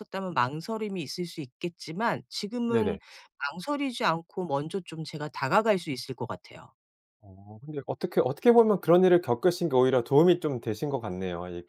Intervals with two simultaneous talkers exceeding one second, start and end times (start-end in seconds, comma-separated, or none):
none